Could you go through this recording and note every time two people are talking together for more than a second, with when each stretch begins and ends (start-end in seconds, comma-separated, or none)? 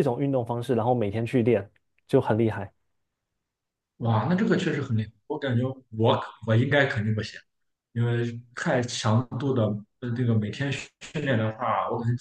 none